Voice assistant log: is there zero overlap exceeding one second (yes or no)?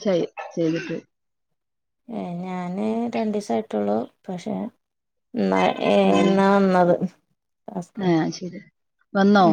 yes